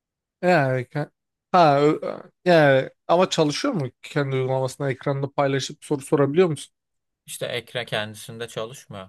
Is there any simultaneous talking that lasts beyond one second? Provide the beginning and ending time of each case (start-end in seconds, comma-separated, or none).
none